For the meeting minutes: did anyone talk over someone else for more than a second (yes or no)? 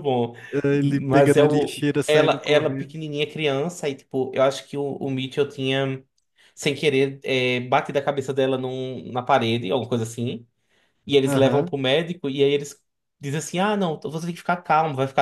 yes